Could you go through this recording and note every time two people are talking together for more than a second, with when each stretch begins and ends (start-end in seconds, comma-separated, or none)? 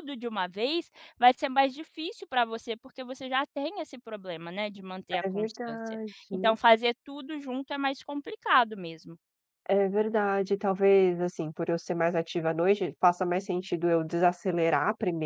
5.2-6.6